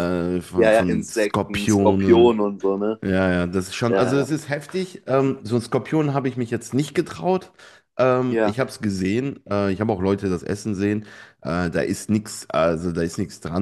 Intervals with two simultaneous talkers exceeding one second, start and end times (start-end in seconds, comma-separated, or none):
0.6-2.4